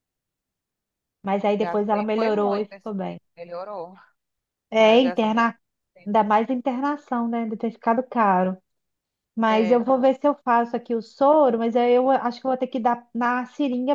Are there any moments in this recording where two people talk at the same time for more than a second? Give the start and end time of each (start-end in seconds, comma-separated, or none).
1.6-3.2